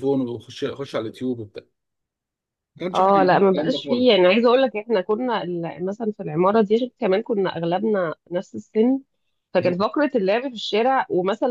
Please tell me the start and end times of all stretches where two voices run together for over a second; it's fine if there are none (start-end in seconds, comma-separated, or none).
2.9-4.2